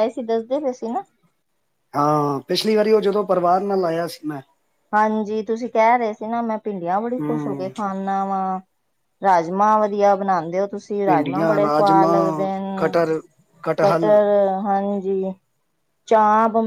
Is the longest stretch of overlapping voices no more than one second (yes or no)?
no